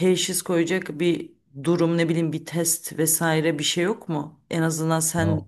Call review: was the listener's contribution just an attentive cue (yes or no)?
yes